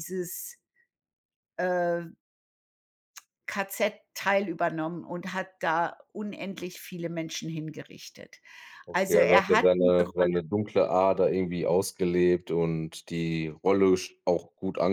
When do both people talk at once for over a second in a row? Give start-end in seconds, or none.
8.9-10.3